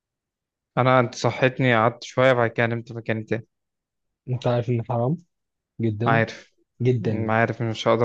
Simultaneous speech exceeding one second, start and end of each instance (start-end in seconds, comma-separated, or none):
none